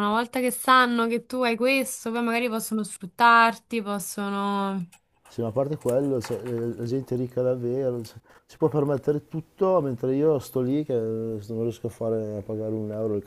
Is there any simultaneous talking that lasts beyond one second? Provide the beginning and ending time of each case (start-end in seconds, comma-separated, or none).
none